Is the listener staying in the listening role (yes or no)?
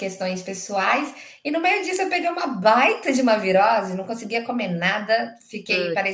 yes